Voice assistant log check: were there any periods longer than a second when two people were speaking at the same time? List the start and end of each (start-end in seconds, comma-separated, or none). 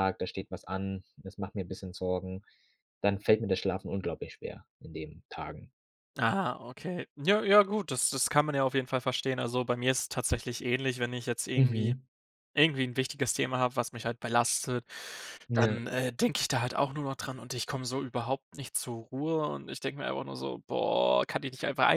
none